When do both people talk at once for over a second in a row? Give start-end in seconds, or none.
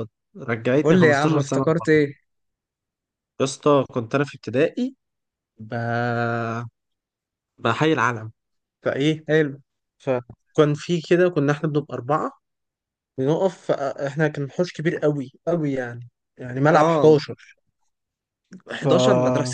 0.8-2.0